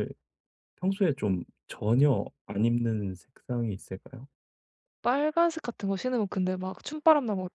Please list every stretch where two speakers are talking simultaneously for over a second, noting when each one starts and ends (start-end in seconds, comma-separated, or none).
none